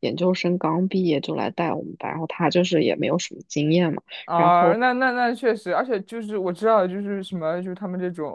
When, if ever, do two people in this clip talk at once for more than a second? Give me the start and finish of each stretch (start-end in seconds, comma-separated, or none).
none